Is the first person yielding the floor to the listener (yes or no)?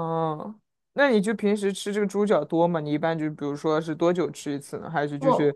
no